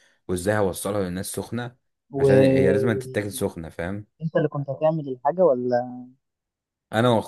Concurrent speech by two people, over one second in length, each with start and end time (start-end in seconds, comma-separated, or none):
2.2-3.4